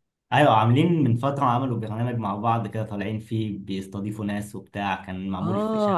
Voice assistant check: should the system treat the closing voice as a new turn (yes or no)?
yes